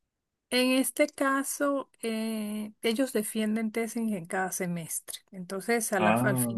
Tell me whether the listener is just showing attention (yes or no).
yes